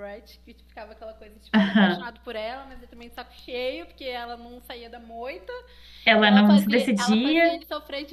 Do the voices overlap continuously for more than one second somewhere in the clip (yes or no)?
yes